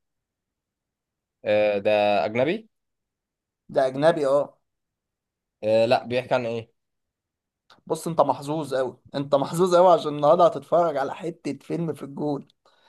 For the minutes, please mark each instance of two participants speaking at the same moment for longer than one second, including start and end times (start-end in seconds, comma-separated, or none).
none